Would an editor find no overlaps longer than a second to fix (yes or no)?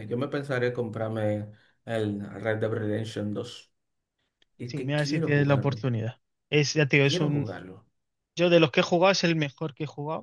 no